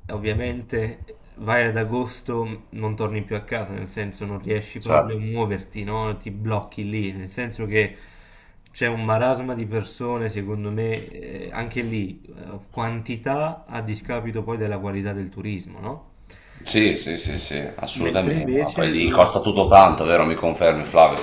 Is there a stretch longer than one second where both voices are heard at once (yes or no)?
yes